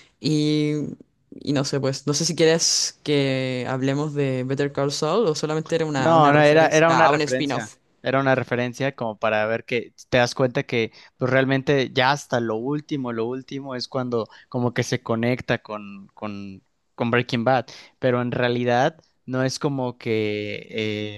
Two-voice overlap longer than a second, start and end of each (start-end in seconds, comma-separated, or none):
6.0-7.8